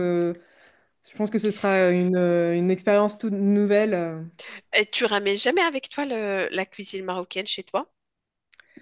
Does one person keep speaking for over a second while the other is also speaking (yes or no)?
no